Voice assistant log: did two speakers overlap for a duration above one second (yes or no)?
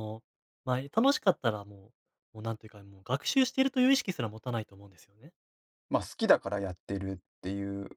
no